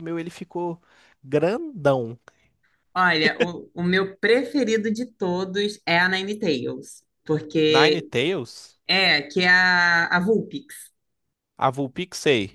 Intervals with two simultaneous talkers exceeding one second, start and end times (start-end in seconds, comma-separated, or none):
none